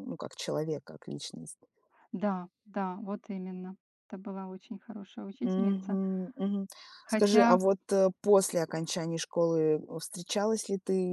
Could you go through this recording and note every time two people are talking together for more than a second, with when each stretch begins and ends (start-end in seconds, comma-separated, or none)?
none